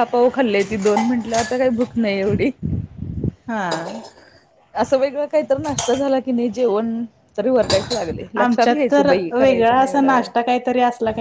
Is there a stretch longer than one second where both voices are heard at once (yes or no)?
yes